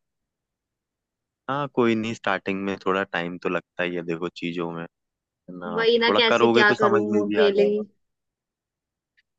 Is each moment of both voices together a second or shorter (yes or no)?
no